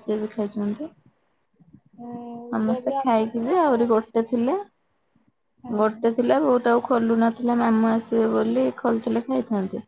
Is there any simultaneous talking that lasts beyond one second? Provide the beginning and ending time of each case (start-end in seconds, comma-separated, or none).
2.6-4.0